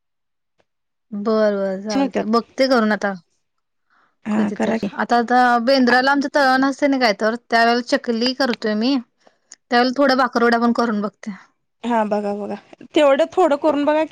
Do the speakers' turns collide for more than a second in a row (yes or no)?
no